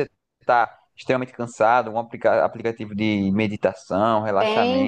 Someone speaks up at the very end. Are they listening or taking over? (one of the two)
taking over